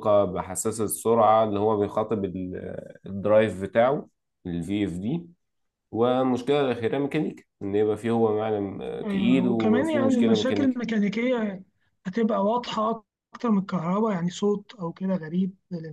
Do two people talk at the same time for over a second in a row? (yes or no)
yes